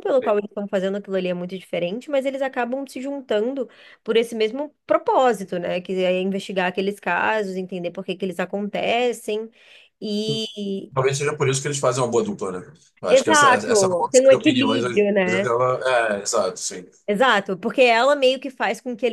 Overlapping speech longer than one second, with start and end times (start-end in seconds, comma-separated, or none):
13.1-15.5